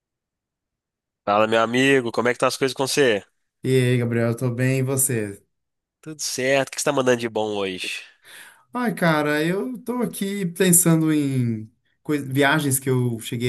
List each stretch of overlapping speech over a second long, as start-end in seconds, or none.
none